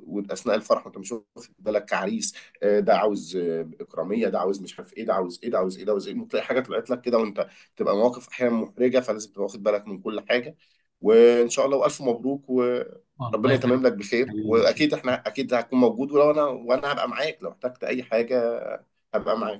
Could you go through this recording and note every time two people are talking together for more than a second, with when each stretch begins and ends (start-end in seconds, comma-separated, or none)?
13.2-14.9